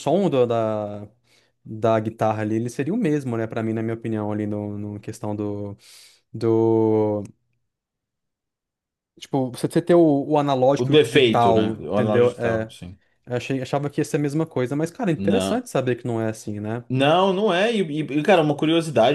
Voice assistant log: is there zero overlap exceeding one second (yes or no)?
no